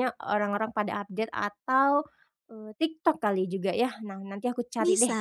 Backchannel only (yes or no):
yes